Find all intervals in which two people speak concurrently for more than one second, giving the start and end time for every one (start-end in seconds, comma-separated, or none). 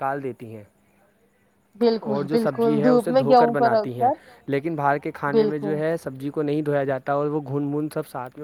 2.1-4.1